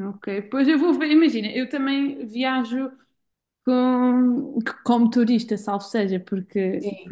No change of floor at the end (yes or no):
yes